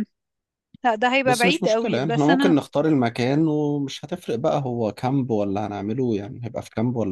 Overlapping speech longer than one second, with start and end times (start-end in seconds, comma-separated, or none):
1.2-2.6